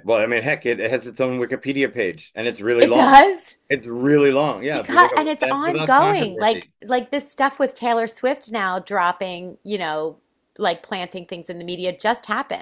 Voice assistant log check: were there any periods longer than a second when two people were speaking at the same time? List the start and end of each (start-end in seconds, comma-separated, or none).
4.7-6.7